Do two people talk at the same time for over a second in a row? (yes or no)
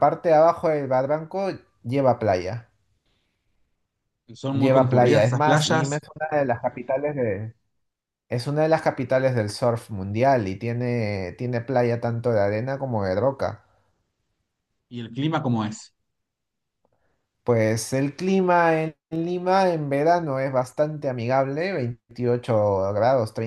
yes